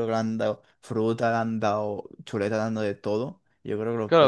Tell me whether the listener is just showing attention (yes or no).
no